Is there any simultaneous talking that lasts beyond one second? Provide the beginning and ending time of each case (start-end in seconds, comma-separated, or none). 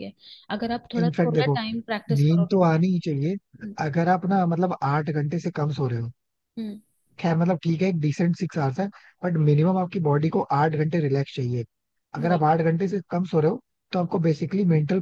1.0-3.3